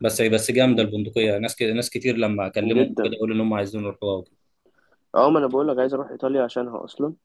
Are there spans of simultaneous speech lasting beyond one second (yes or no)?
no